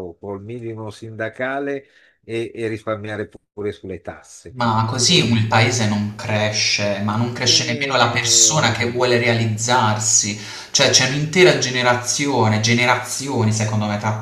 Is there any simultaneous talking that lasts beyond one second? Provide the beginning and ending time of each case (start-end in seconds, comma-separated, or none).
7.5-8.7